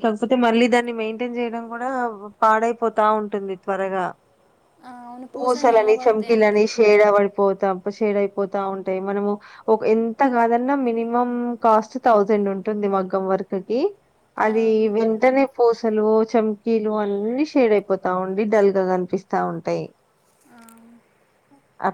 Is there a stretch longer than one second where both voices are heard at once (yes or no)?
yes